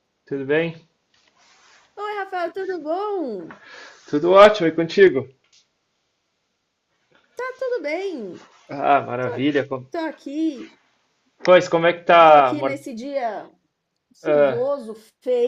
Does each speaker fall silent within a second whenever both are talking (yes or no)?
yes